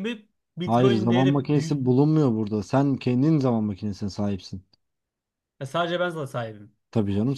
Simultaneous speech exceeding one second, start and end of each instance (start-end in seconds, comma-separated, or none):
0.6-1.8